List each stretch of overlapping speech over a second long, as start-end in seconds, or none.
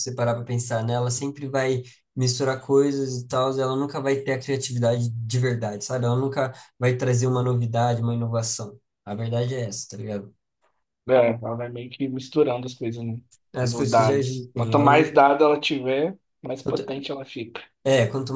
13.6-15.2